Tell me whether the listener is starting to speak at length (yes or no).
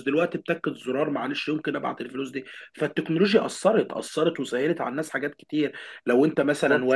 no